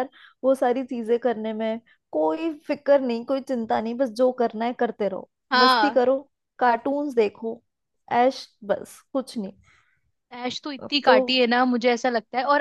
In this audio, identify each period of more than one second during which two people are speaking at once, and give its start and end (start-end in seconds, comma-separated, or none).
none